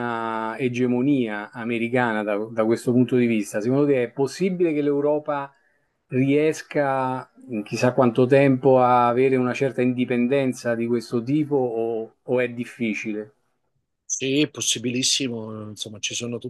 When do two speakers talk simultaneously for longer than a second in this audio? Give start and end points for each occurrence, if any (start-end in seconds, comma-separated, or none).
none